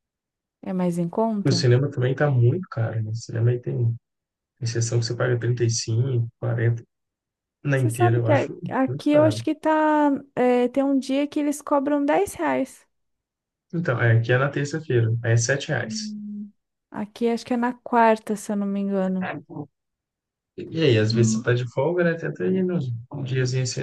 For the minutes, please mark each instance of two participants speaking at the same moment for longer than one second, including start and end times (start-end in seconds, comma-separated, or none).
7.7-9.4